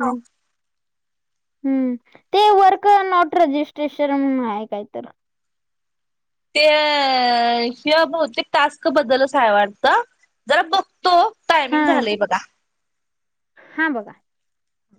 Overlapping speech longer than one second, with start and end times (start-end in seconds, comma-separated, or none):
none